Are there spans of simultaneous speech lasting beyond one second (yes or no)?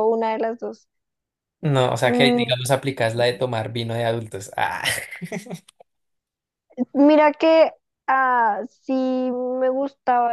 no